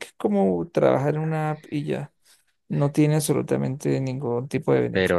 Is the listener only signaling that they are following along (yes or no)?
no